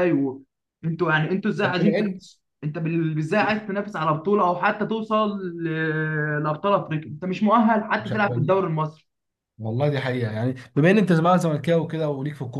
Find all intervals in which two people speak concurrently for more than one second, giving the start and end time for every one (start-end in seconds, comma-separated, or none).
none